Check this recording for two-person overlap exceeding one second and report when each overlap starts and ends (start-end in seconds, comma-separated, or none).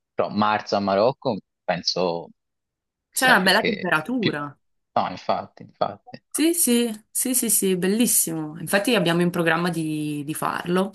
3.1-4.4